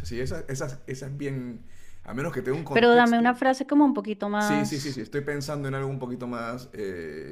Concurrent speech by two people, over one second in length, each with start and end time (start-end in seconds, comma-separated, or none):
none